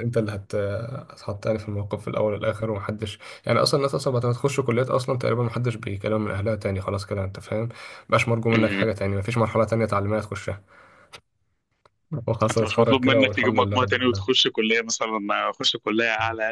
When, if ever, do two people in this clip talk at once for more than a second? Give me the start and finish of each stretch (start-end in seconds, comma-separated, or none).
12.5-14.3